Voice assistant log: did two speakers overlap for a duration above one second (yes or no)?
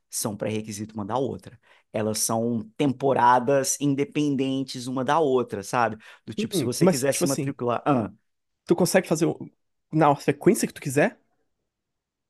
yes